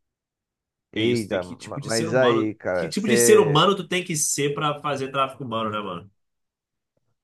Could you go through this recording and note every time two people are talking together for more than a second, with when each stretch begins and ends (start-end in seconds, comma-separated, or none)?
0.9-3.6